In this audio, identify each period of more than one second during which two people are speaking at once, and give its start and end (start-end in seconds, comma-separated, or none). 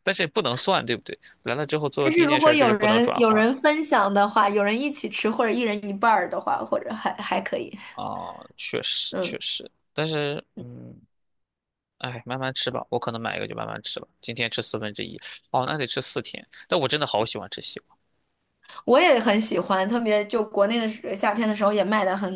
2.0-3.5